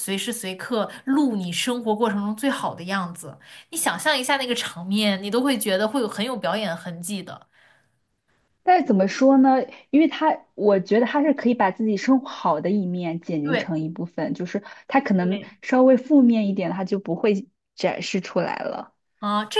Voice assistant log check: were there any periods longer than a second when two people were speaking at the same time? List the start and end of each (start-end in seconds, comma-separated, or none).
none